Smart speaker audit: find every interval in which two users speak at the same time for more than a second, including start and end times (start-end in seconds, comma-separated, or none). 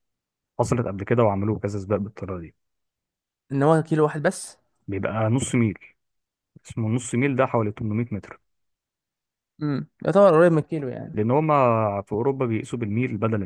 none